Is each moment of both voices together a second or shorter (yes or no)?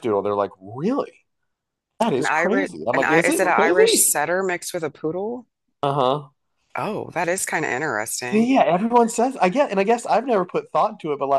no